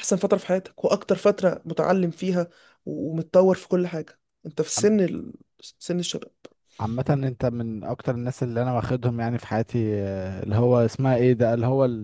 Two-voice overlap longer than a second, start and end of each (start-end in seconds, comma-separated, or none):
none